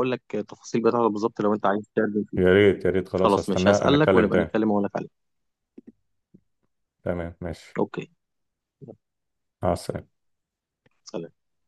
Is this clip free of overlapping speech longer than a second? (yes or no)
no